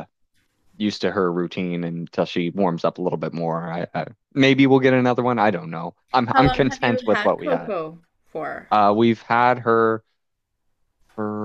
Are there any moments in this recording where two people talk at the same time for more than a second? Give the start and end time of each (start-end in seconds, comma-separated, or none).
6.3-7.7